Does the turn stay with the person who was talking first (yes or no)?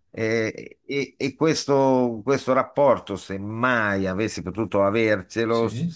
yes